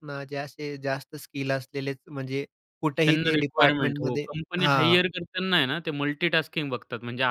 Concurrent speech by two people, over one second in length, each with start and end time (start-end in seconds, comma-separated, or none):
3.1-5.0